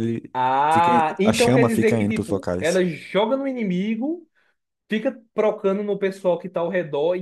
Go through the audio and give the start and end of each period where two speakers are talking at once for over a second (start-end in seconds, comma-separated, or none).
0.7-2.8